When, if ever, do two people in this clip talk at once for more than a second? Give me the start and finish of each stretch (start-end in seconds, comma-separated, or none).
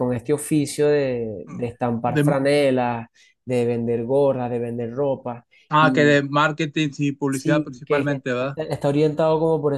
7.3-8.6